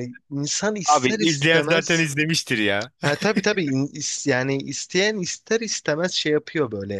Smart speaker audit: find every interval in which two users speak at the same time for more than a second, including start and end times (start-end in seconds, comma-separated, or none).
0.8-2.1